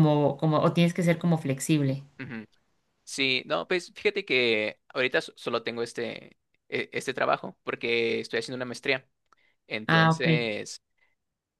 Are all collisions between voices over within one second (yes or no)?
yes